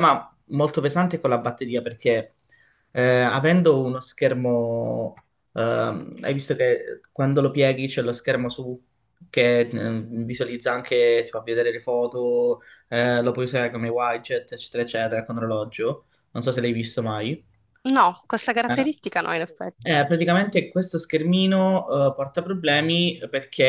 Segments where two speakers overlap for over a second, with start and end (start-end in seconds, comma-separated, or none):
none